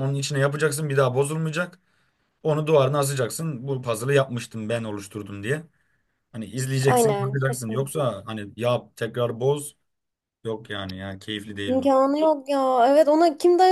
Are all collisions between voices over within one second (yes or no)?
no